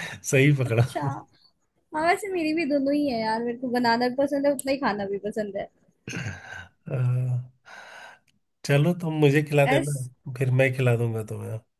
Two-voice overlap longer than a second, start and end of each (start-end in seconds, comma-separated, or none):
none